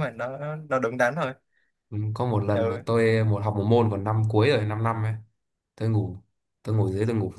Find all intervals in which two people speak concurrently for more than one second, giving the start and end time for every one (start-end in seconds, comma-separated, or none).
none